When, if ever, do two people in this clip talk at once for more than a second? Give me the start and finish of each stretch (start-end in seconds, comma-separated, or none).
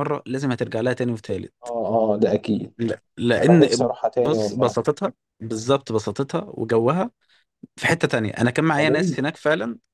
3.4-4.8